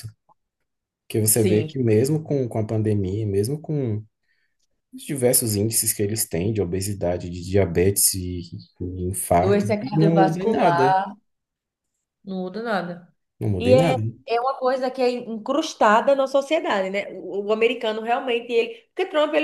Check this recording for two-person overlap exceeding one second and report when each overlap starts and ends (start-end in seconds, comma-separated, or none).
9.4-10.9